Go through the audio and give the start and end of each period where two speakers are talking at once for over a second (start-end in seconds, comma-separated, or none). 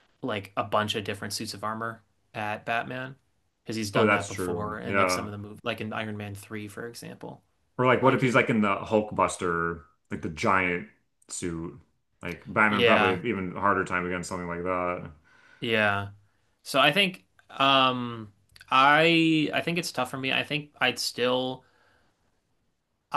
3.9-5.3